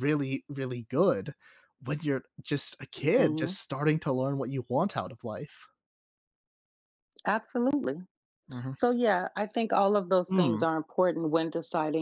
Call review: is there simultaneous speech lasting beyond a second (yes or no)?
no